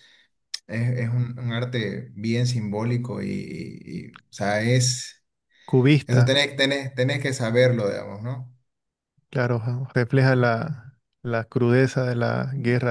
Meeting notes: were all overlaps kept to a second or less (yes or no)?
yes